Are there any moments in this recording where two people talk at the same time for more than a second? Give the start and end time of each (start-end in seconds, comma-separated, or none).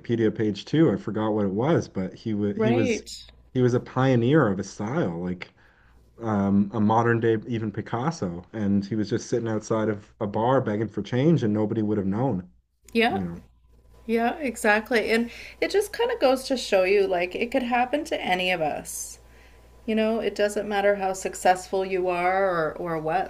none